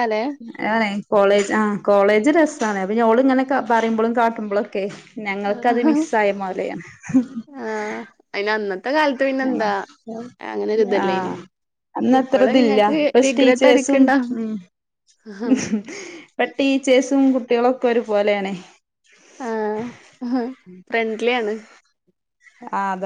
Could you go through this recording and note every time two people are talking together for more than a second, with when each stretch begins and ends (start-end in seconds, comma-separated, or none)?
12.2-14.0